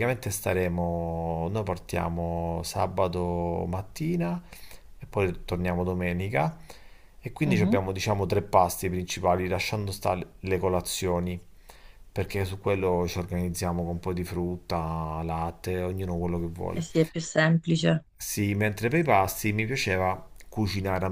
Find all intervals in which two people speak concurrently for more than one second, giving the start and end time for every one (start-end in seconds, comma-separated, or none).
none